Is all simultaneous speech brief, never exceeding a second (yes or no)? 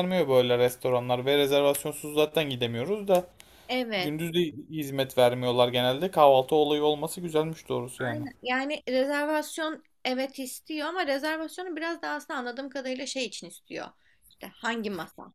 yes